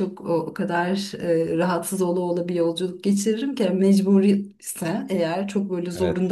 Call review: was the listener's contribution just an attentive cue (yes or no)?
yes